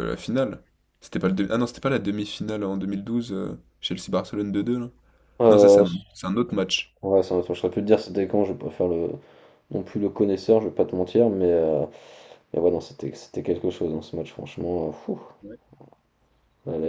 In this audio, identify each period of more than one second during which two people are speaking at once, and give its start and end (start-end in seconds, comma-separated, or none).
none